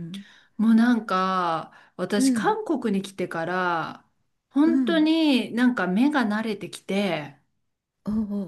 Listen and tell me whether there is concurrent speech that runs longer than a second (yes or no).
no